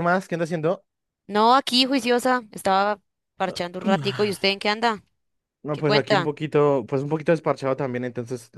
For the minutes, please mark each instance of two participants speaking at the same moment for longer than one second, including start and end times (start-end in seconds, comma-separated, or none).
none